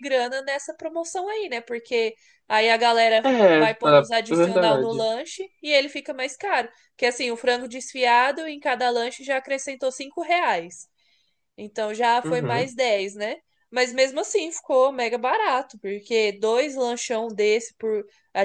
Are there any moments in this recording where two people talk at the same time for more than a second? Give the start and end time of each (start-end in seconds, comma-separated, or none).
3.2-5.0